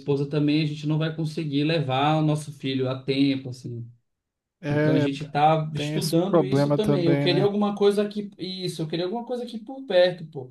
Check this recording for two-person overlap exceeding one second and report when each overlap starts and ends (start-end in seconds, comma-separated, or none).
5.7-7.5